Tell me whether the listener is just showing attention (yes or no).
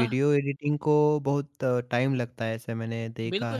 no